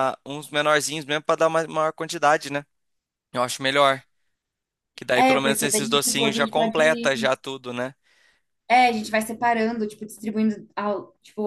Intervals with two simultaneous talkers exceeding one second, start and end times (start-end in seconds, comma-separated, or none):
5.1-7.3